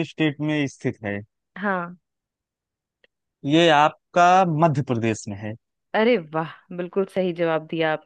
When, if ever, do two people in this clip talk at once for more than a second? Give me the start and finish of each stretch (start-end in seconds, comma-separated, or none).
none